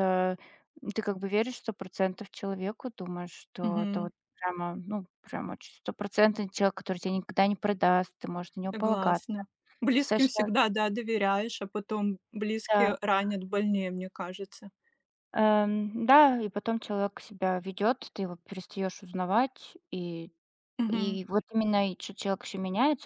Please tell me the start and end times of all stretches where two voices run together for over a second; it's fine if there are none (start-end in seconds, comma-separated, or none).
none